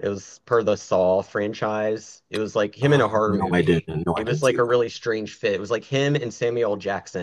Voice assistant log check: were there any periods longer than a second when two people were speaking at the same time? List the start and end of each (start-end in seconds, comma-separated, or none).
2.8-4.8